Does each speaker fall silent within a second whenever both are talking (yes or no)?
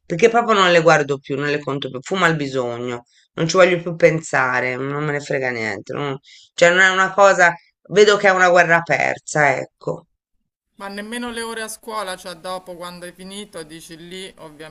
yes